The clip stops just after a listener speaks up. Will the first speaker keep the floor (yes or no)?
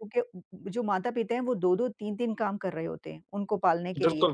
yes